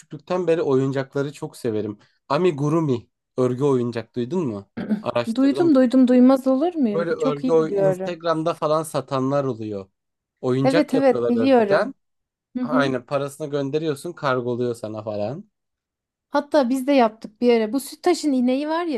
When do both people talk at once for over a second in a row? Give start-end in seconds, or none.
6.9-8.2, 10.6-11.9